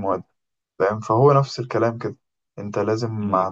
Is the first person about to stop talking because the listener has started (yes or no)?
no